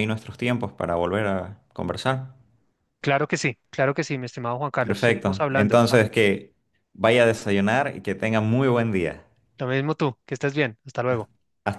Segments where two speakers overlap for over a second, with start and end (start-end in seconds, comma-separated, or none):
4.8-6.0